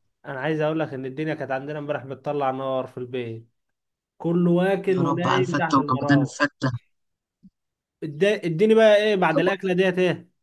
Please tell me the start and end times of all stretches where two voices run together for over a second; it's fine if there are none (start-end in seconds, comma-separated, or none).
4.9-6.4